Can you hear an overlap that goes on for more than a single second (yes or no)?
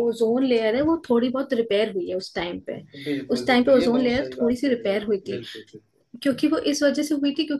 yes